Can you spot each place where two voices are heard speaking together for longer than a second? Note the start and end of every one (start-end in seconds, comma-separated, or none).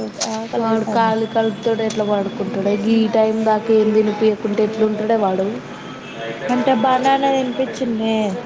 none